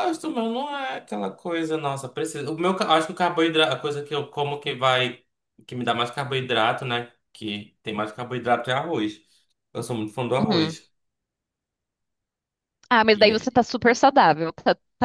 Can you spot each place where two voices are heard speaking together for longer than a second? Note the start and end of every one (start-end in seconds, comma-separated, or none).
none